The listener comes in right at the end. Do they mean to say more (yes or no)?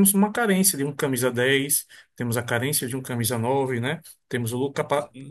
no